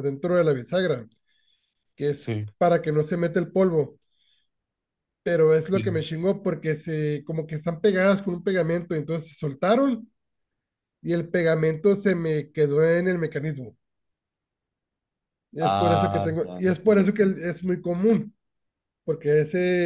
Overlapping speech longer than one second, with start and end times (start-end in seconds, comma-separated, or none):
15.6-17.3